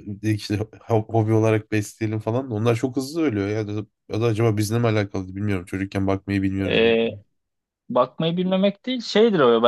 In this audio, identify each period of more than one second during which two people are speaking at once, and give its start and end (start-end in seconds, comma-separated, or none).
none